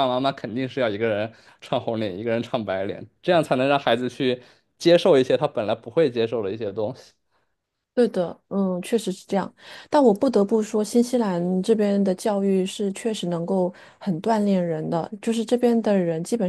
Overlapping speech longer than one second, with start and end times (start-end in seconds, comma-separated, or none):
none